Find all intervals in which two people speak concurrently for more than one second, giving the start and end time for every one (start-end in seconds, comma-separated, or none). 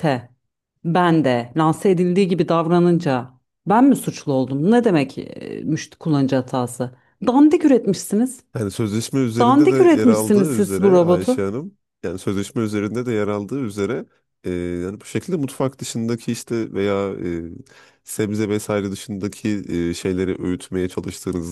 9.4-11.5